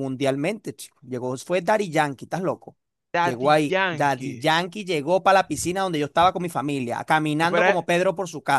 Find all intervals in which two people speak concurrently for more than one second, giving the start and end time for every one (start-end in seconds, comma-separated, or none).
3.2-4.5